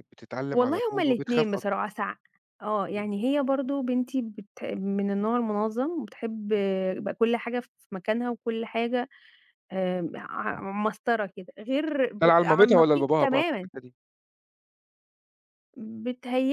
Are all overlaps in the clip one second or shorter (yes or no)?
no